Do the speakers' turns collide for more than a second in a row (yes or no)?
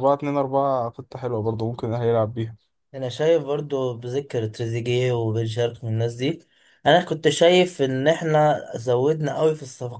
no